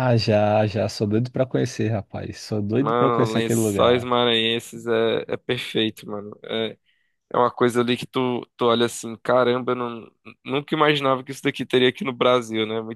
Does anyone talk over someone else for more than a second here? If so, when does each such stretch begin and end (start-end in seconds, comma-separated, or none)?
2.8-4.1